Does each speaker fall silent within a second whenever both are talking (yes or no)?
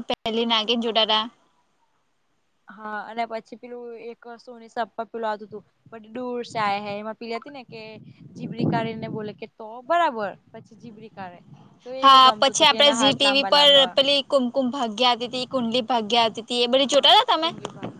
no